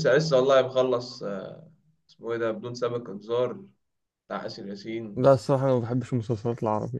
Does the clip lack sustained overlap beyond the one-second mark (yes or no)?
yes